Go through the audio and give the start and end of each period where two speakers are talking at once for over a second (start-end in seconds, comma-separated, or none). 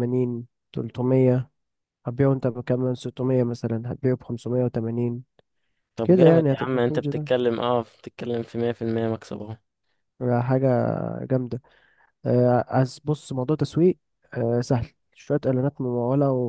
6.0-7.3